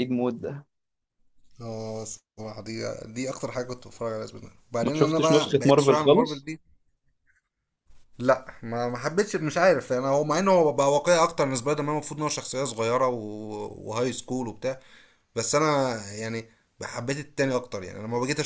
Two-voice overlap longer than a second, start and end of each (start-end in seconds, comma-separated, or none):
4.8-6.5